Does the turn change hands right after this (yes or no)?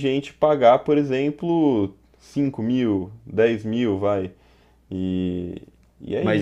yes